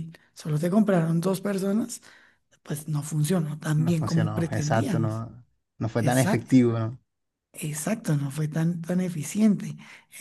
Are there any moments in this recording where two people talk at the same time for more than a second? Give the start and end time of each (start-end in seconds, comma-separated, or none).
3.8-5.2